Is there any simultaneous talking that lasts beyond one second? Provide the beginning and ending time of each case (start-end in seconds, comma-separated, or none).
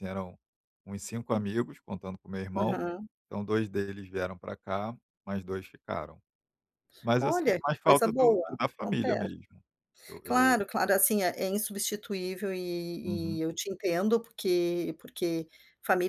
7.2-9.3